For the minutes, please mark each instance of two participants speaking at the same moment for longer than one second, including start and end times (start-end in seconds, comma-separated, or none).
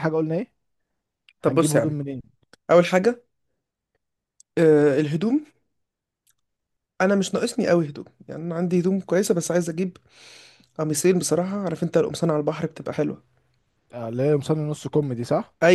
none